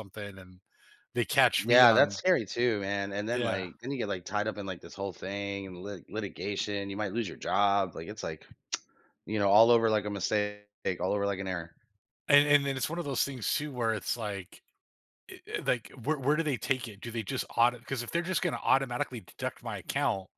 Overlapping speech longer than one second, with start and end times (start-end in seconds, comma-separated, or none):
none